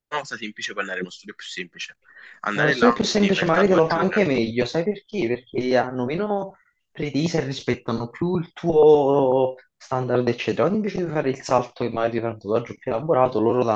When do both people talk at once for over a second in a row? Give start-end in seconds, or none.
2.5-4.3